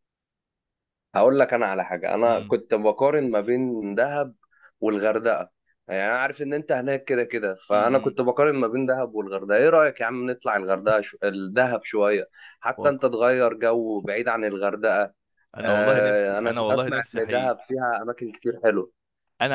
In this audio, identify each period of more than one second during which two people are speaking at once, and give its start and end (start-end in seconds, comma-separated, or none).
15.6-17.6